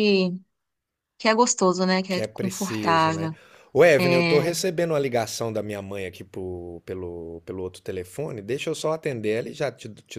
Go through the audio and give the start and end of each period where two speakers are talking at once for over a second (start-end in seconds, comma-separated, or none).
2.1-3.3